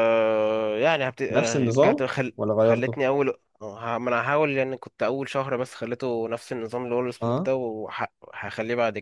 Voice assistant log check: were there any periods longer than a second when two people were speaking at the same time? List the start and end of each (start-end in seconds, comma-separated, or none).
1.3-3.0